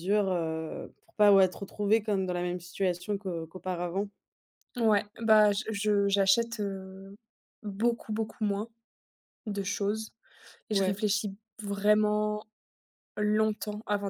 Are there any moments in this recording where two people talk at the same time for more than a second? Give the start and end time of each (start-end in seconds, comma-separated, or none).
none